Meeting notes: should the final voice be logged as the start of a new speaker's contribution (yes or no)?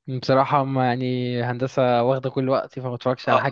yes